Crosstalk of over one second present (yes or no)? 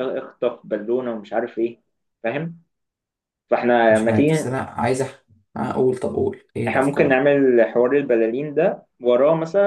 no